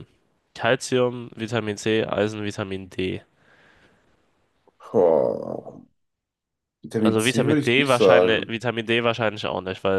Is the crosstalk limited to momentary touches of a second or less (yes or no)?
no